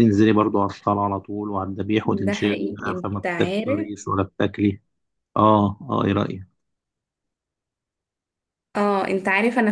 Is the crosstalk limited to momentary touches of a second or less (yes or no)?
no